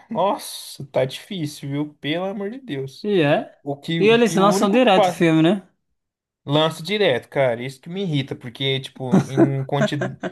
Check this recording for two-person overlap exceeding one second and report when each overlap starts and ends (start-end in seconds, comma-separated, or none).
4.0-5.3